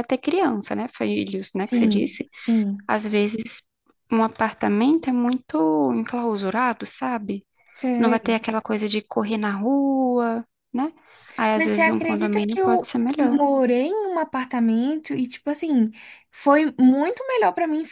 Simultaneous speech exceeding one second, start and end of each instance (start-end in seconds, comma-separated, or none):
11.6-13.4